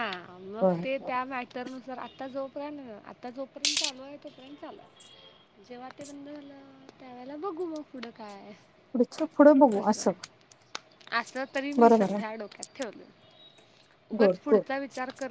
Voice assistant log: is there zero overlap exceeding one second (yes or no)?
yes